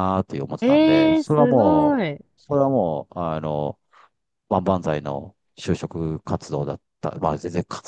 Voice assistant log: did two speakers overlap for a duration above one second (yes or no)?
yes